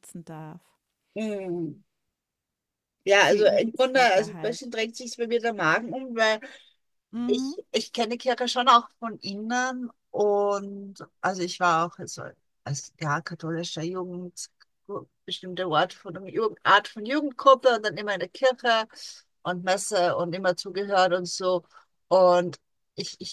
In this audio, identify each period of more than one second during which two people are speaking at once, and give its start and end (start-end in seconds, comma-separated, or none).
3.2-4.7